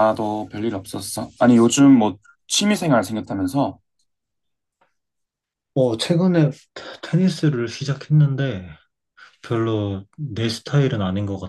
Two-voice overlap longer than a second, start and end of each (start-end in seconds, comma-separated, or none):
none